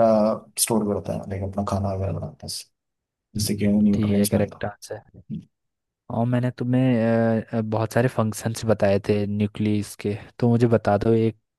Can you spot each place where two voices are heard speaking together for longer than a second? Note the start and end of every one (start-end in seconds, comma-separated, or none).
3.4-4.6